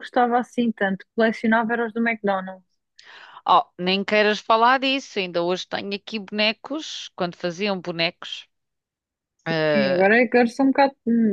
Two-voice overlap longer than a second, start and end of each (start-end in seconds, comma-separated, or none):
none